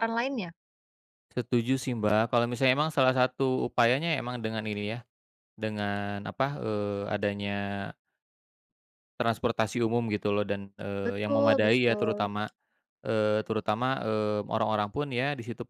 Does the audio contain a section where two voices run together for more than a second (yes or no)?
yes